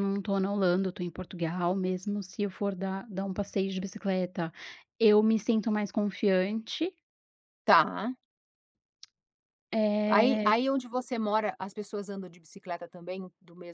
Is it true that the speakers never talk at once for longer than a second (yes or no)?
yes